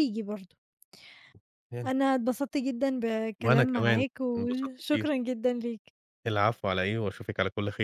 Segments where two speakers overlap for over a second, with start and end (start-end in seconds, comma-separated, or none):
3.4-5.1